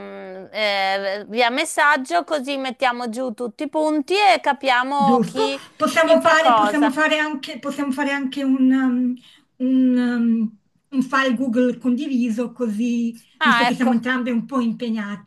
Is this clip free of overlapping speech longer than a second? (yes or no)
no